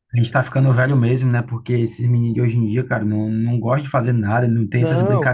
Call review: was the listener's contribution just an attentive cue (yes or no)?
yes